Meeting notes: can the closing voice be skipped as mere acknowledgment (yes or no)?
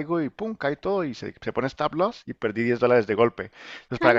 yes